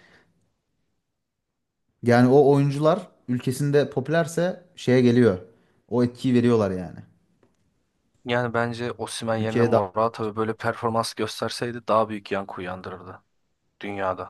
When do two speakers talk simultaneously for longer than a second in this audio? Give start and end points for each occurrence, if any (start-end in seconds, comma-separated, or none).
none